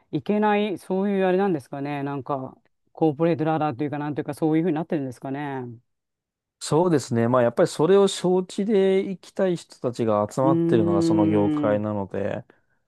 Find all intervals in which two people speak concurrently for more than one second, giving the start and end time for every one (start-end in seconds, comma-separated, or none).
10.4-11.9